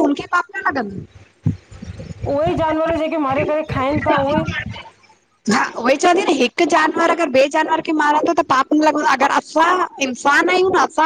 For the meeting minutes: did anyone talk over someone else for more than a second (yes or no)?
no